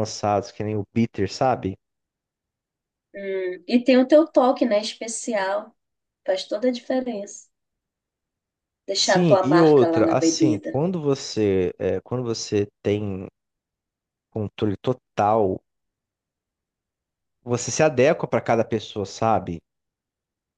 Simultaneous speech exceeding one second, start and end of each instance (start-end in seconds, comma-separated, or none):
9.0-10.8